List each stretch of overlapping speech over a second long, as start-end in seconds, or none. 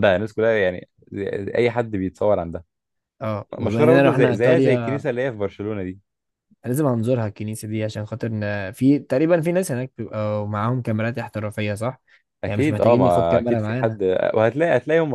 3.6-5.0, 12.4-14.0